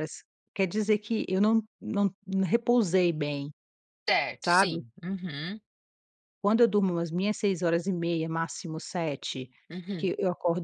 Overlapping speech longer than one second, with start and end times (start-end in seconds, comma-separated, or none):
none